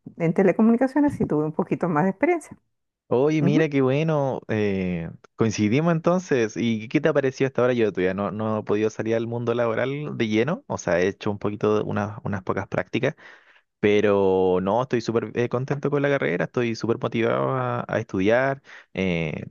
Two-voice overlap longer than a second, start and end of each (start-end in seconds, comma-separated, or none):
none